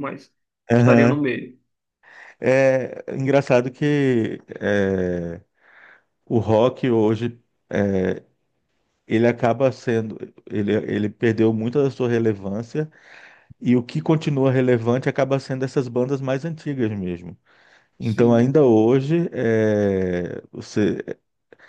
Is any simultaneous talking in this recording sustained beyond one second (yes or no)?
no